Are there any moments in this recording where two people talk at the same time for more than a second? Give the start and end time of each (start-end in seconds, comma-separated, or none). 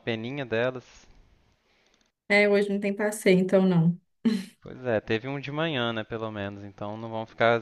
none